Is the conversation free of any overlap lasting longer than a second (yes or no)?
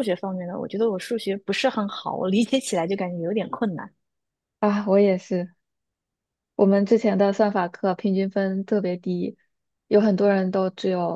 yes